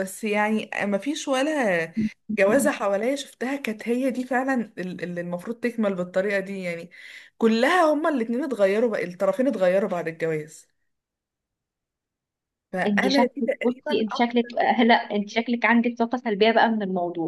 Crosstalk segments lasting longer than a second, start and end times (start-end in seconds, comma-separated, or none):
12.9-15.4